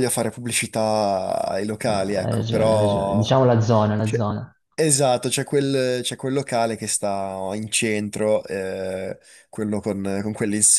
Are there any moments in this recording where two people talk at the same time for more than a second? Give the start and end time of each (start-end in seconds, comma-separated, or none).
1.9-3.3